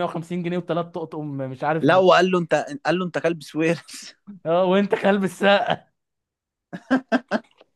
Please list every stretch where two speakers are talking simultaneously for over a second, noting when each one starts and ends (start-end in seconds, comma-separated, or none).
none